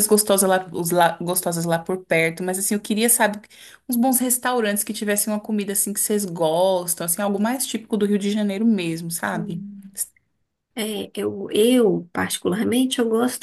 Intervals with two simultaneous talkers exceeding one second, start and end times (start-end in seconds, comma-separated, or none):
none